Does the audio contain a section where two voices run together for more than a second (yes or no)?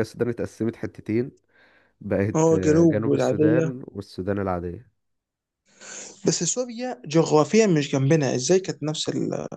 yes